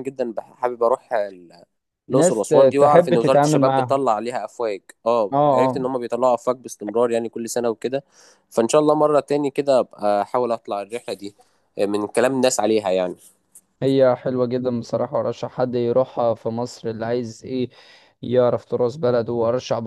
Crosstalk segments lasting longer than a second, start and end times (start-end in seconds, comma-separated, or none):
2.1-4.0